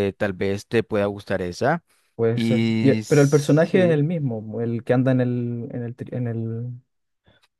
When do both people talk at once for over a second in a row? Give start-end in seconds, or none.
2.3-4.0